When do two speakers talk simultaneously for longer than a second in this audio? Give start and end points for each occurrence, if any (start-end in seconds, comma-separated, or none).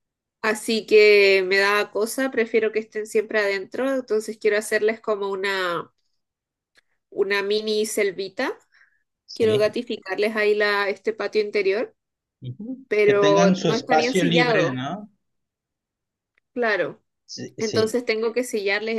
12.9-14.8